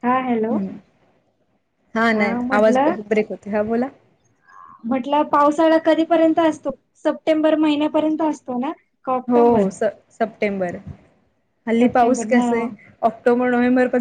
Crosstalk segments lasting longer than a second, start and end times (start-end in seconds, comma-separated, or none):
none